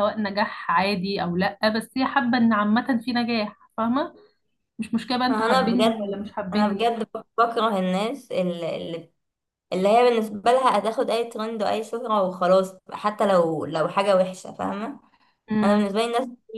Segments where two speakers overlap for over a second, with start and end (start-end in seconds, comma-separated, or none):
5.3-6.9